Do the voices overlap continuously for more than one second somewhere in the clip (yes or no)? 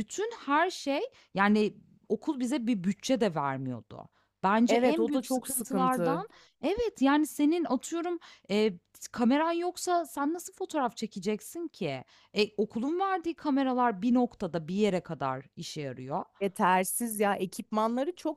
yes